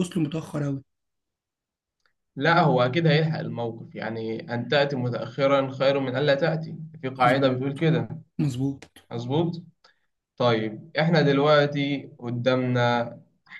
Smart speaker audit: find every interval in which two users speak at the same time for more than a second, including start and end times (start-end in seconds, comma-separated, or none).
none